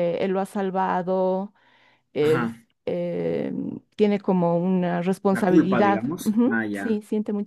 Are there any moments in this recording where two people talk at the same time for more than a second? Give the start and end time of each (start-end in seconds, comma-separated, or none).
5.3-7.0